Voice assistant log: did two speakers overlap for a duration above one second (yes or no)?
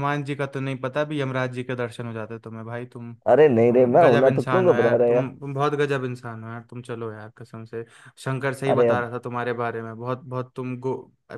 yes